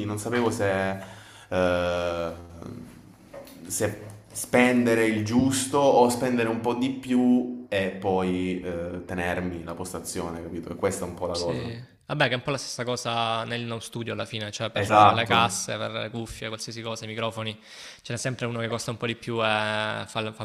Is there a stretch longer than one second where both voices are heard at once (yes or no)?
no